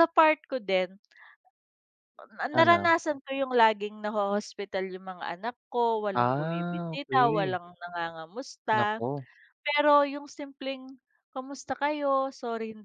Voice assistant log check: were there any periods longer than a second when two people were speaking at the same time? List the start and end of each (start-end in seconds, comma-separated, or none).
6.1-7.6